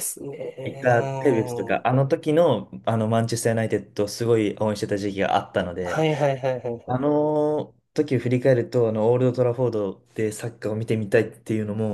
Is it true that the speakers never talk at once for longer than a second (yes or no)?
no